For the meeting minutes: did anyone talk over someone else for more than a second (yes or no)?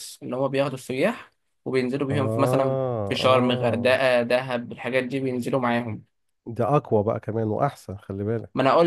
yes